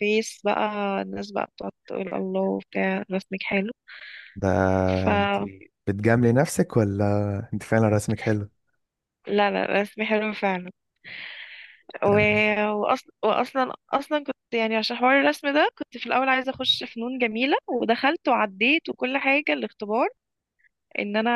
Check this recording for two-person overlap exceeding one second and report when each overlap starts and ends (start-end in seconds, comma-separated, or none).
none